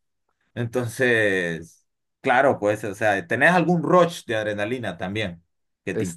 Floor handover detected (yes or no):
yes